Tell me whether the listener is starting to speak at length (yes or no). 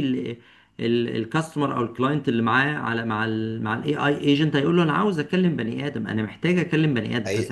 no